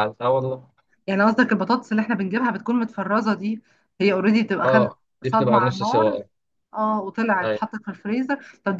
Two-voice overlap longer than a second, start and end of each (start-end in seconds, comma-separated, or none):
4.6-6.2